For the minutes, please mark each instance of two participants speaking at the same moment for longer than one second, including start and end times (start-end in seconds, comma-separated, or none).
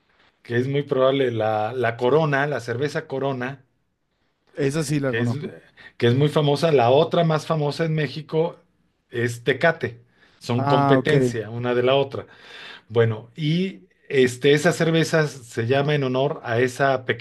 none